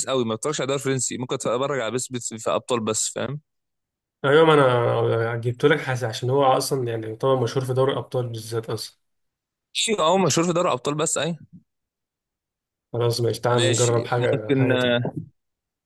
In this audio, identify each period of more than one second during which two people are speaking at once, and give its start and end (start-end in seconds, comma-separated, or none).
13.5-14.7